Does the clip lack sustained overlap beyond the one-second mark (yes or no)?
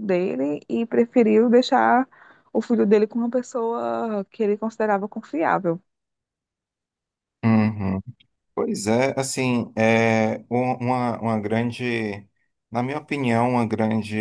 yes